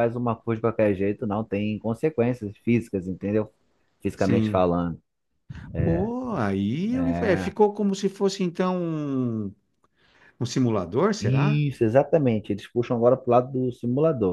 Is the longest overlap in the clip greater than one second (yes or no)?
no